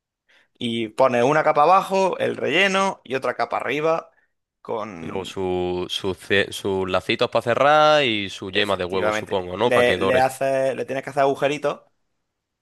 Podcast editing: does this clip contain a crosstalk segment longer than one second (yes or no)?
yes